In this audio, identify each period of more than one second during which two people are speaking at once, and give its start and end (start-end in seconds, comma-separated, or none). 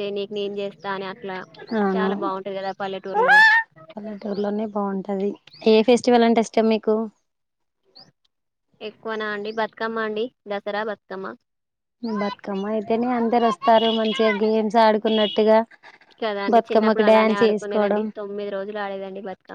16.5-18.0